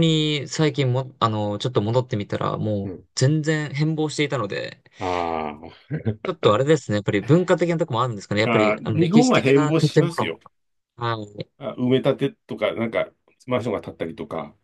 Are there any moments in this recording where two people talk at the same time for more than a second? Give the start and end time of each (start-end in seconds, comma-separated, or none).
8.4-10.3